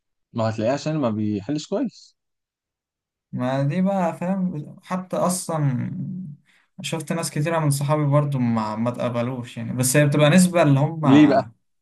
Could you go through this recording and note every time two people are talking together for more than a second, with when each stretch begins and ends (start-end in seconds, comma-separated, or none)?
none